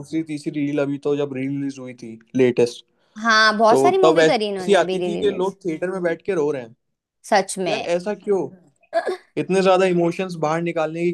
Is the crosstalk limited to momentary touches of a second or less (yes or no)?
no